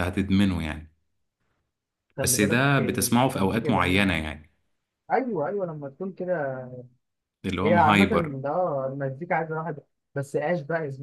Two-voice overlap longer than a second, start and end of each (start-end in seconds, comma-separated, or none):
2.2-4.1